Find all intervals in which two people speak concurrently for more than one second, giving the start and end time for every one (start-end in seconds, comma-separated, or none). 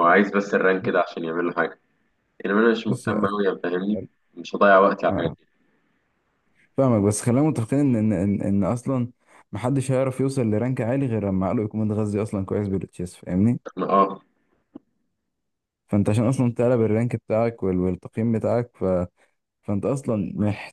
none